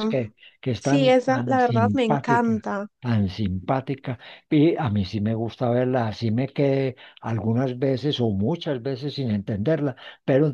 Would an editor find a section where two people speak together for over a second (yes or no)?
yes